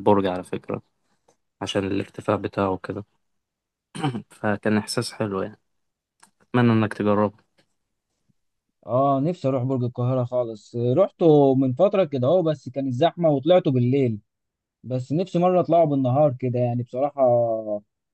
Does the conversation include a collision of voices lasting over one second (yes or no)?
no